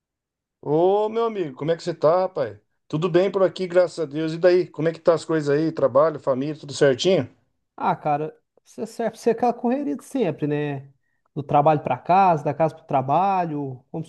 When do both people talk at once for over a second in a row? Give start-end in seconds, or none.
none